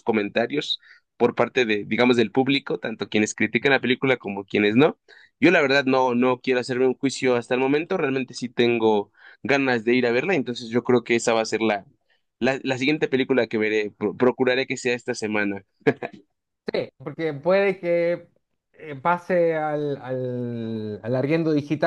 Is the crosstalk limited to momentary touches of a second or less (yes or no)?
yes